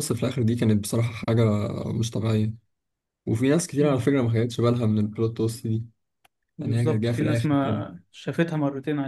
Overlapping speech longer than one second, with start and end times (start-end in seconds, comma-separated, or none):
6.6-7.8